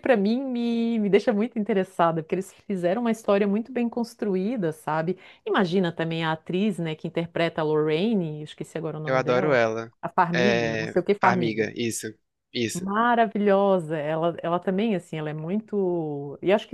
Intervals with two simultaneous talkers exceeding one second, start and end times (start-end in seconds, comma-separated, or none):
10.3-11.7